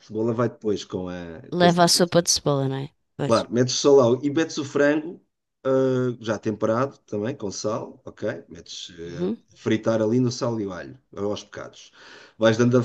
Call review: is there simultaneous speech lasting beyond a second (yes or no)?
no